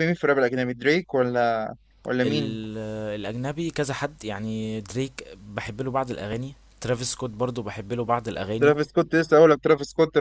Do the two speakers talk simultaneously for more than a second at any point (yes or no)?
no